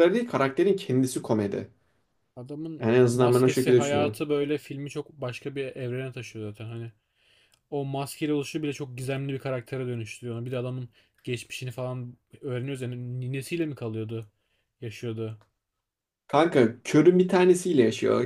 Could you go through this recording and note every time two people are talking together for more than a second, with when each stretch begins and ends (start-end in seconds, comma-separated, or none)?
2.8-4.2